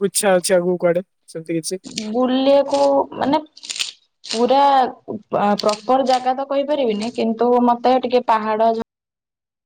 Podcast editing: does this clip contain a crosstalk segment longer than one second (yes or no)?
no